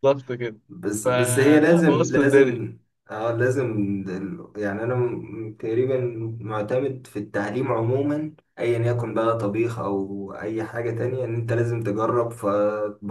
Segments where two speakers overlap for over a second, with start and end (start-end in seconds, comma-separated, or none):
1.0-2.6